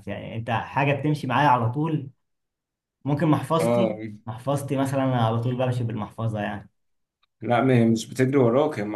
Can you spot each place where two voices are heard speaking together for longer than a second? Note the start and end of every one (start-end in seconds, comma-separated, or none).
none